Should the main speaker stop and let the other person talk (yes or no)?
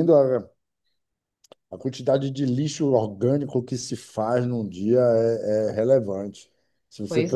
no